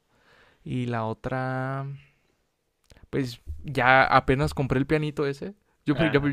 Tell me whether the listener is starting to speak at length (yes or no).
no